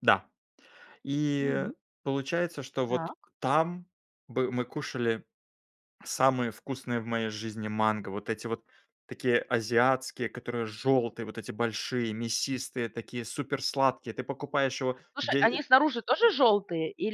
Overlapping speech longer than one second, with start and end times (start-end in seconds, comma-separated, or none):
none